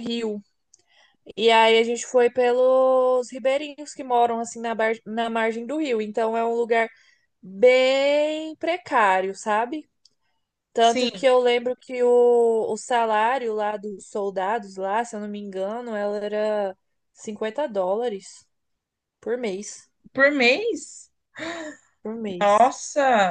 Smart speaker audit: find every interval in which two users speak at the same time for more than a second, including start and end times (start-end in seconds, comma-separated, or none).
none